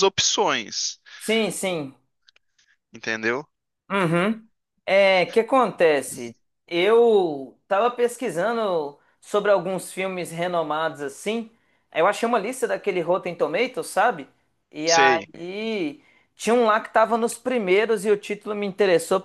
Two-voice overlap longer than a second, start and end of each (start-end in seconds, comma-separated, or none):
none